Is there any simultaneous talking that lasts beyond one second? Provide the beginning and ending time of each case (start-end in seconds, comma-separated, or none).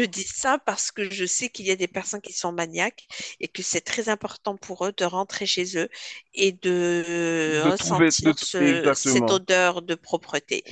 7.5-9.4